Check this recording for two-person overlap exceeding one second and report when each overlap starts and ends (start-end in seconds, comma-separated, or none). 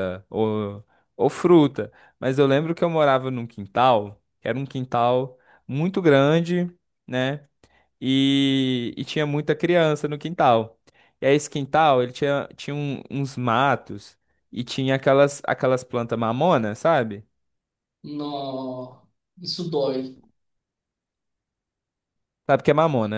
none